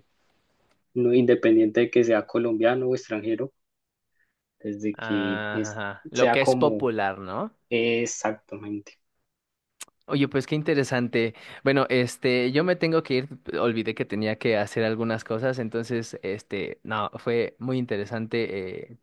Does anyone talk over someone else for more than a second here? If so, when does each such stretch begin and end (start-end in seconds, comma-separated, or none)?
4.9-6.9